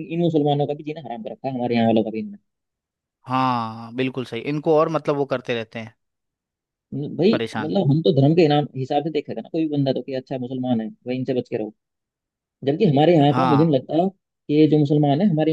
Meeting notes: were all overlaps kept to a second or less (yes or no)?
yes